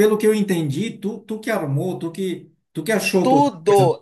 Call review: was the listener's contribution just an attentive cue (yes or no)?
no